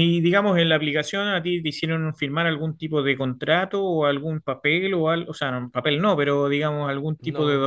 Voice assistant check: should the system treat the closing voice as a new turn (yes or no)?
no